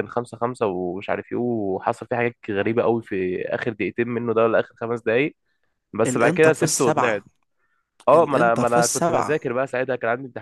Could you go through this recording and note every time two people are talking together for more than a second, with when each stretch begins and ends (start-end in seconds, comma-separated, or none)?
6.0-7.2, 8.1-9.5